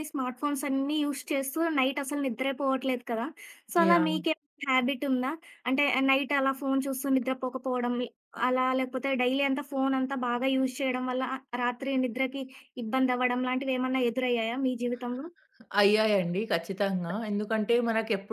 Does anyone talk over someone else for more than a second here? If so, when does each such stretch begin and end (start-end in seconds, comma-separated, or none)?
none